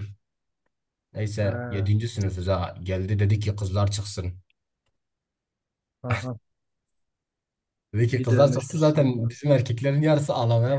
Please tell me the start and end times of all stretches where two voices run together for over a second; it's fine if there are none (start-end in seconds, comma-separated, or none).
8.1-9.3